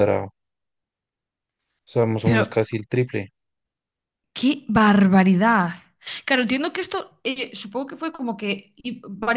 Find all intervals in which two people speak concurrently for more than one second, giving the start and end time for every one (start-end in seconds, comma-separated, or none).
none